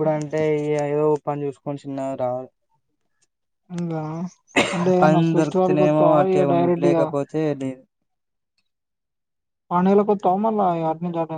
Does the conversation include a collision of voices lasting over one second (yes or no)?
yes